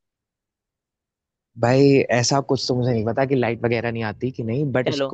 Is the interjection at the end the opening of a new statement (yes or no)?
no